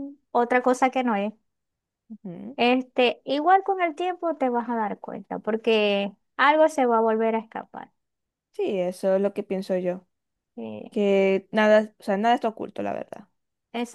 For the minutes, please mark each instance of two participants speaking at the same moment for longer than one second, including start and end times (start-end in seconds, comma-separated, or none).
none